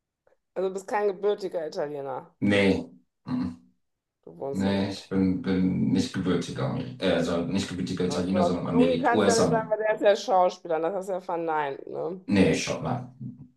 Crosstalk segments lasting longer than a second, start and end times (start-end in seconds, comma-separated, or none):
8.1-9.7